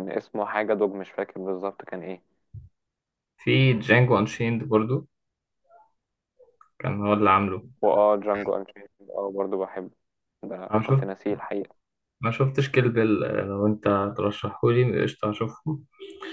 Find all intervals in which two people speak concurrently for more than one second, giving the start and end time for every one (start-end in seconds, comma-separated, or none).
none